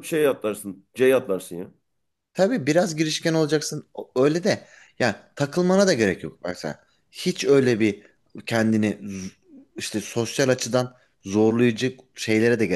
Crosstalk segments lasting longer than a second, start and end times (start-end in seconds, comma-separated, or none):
none